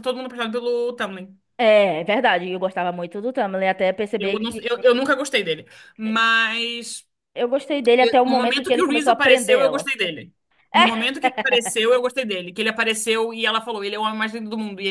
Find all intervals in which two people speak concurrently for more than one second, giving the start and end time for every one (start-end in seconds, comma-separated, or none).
8.0-9.9